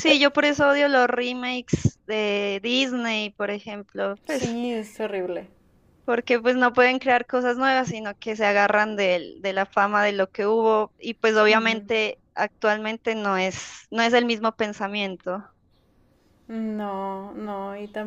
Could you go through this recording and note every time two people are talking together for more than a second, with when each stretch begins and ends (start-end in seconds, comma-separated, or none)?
none